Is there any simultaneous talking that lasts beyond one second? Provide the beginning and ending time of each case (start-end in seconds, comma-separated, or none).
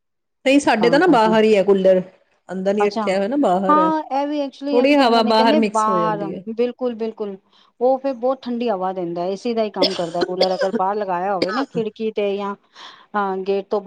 4.7-6.4